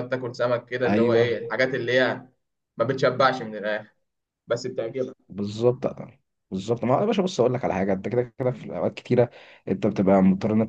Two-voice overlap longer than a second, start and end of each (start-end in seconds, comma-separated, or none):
none